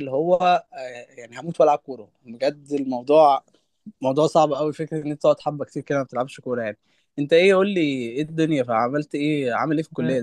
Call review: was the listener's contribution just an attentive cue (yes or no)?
no